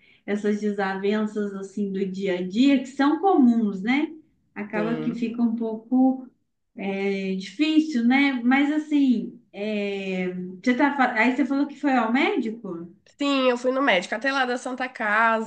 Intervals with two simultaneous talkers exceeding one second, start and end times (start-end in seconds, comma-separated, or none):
none